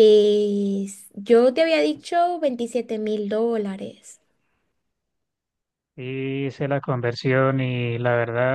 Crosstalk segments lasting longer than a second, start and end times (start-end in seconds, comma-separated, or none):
none